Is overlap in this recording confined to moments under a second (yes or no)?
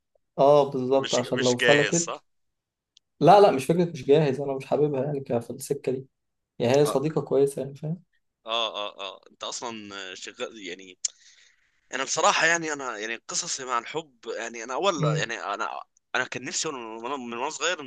no